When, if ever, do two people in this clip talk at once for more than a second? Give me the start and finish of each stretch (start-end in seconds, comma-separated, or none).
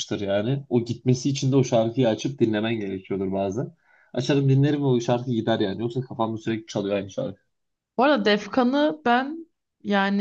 none